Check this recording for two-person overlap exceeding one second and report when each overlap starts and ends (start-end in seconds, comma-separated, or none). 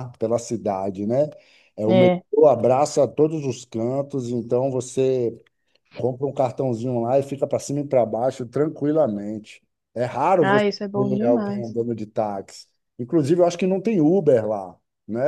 10.4-11.8